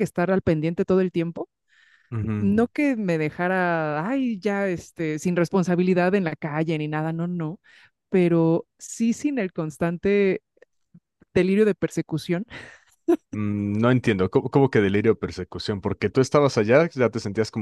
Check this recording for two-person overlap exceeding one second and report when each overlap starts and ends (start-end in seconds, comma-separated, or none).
none